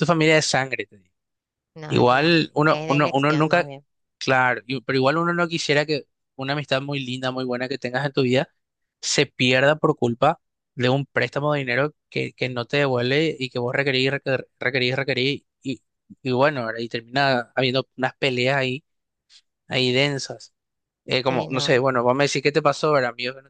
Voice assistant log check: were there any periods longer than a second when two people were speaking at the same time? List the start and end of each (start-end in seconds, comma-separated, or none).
1.9-3.7